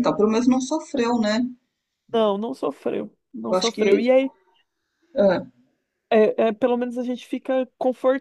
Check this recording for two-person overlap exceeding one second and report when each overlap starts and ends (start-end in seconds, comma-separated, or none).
none